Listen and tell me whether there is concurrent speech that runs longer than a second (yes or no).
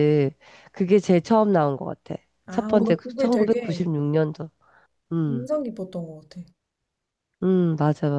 yes